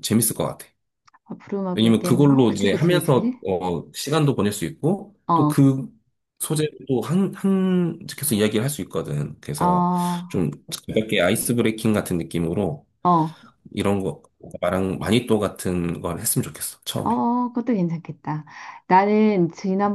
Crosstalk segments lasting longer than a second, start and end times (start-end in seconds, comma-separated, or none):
1.7-3.4